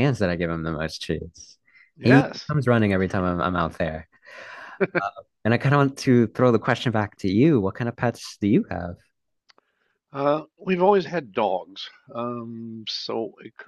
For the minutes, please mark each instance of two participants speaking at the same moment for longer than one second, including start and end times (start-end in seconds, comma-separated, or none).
none